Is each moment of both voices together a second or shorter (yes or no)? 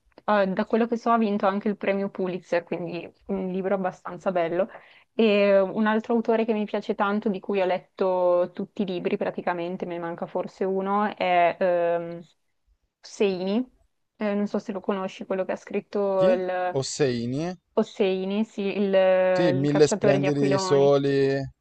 no